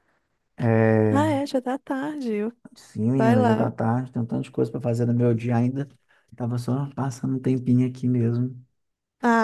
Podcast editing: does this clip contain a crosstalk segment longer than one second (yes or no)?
no